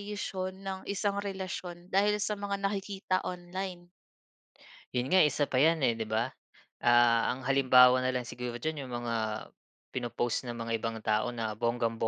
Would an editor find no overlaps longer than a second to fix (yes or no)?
yes